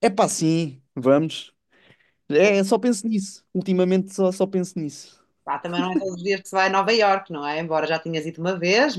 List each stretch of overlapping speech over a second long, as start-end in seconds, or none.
none